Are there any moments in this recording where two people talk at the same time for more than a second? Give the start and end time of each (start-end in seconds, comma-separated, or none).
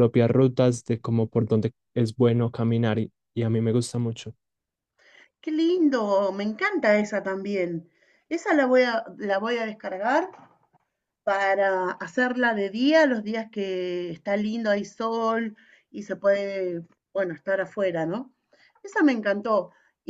none